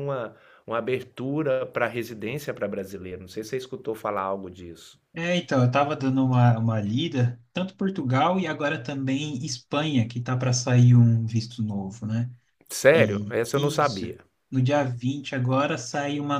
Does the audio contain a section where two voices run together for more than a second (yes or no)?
yes